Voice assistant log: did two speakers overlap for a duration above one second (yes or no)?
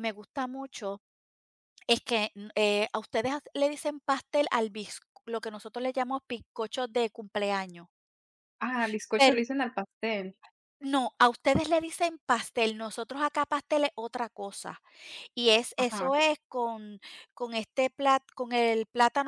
no